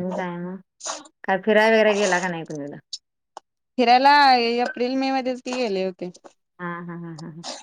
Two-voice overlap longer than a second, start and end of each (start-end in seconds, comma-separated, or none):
none